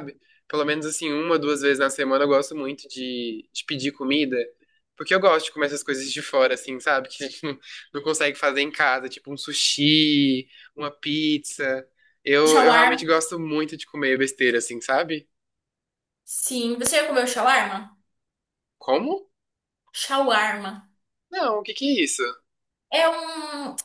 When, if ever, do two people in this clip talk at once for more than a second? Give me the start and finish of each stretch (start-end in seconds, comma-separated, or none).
none